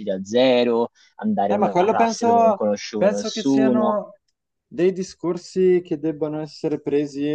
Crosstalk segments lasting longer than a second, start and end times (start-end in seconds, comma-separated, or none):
1.5-4.0